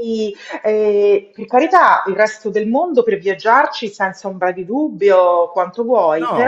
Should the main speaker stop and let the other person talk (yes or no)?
yes